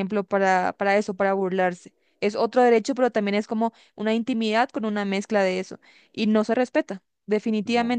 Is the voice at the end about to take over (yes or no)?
no